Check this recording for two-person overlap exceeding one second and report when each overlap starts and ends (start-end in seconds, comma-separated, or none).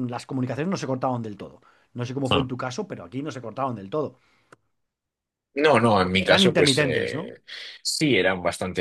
6.0-7.3